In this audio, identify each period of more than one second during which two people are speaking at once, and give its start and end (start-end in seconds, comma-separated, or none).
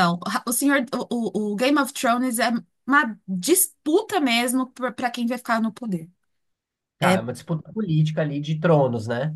none